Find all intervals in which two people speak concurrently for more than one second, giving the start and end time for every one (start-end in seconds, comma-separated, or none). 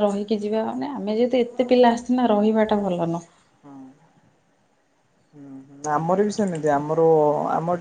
none